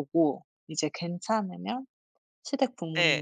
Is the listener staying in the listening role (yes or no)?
yes